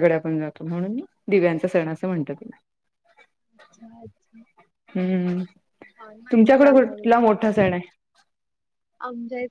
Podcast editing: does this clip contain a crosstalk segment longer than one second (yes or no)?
yes